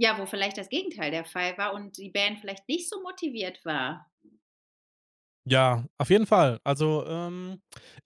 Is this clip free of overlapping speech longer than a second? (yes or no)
yes